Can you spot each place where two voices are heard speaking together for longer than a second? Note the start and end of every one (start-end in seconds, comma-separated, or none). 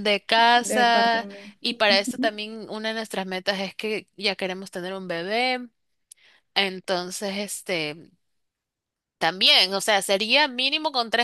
0.6-2.3